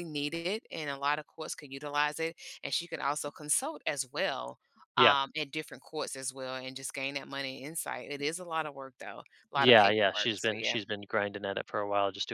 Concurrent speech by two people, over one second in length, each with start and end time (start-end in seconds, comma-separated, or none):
9.6-10.8